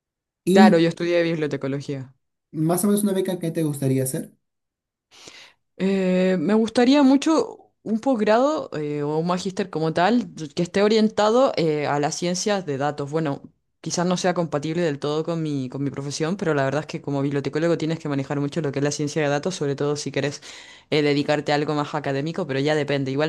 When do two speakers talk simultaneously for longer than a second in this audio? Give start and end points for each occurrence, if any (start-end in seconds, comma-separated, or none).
none